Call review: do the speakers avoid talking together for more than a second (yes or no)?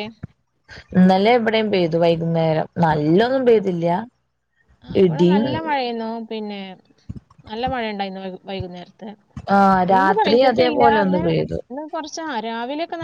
no